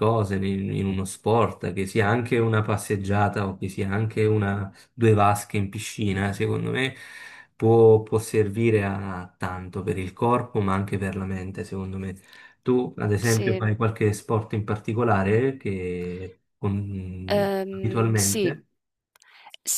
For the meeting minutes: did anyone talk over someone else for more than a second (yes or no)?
yes